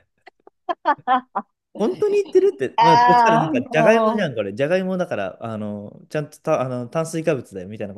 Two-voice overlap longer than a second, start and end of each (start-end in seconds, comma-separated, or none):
2.8-4.3